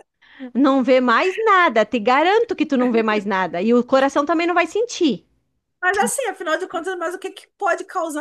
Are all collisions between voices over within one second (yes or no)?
yes